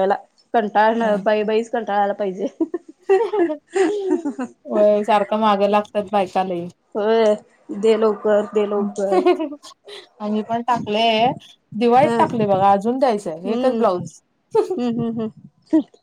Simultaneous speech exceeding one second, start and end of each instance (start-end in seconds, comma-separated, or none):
none